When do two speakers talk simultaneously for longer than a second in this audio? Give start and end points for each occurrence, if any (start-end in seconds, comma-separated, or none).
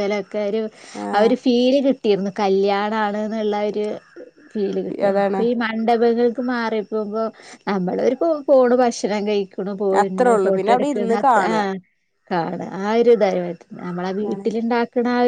10.0-11.6